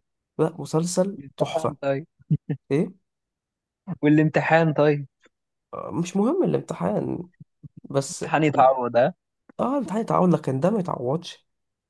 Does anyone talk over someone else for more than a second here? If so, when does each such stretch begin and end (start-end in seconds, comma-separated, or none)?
none